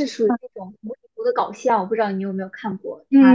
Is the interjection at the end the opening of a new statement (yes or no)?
yes